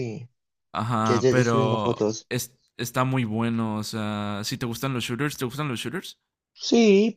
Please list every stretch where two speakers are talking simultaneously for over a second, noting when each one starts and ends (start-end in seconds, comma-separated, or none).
1.0-2.3